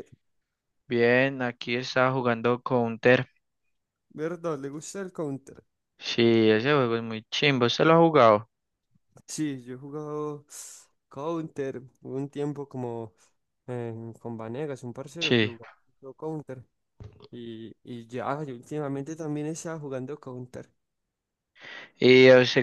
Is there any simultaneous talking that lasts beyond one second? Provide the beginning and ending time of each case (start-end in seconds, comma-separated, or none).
none